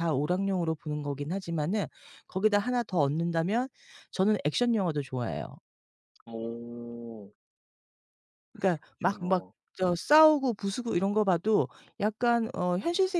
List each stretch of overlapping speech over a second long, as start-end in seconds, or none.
none